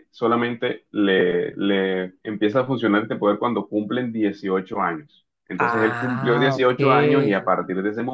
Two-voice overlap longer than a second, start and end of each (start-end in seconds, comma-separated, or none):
5.6-7.4